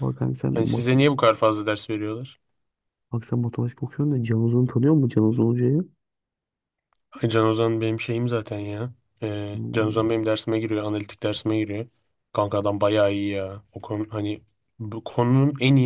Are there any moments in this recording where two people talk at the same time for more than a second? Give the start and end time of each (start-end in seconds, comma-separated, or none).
none